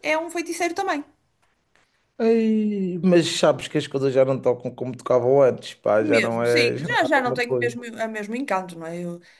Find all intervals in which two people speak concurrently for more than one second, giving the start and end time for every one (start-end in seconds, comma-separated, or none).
6.0-7.8